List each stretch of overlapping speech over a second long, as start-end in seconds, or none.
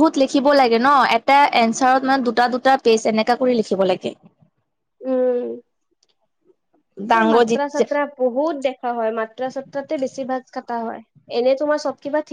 none